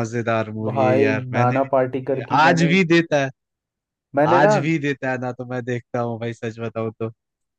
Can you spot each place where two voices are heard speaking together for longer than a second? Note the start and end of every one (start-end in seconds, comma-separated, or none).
0.7-2.8